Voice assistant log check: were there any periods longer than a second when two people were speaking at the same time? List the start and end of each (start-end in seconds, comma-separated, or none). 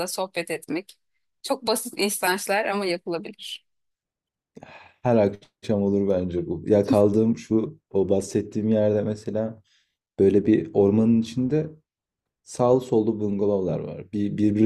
none